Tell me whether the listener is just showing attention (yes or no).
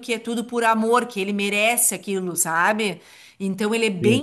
yes